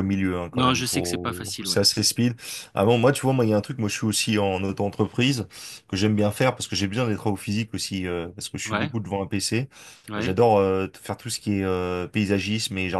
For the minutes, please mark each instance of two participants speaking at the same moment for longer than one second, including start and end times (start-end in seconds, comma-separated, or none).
0.5-1.8